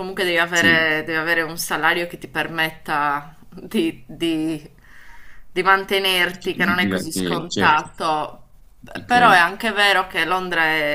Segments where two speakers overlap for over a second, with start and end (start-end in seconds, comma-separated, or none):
6.4-7.9